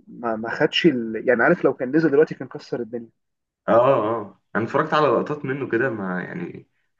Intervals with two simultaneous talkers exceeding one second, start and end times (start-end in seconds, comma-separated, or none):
none